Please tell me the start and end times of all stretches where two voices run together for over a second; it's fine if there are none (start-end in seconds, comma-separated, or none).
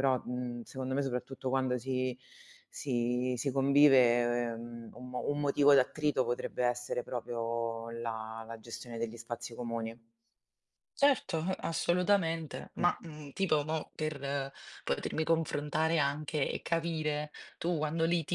none